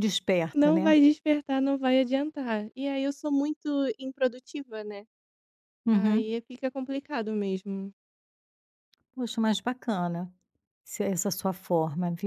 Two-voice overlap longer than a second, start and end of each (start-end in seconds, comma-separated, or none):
none